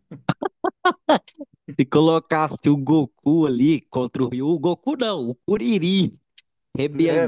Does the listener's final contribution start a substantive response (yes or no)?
yes